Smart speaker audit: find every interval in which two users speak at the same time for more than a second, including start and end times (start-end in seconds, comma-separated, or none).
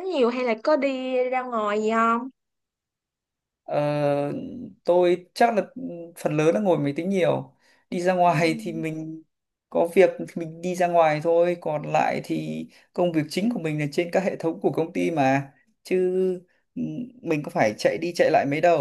none